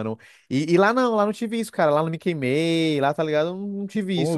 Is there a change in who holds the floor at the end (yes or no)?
yes